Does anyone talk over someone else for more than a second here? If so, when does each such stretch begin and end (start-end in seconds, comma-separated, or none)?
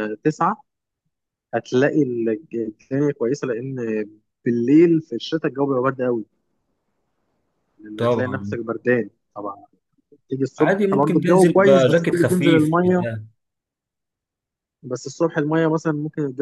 10.6-13.0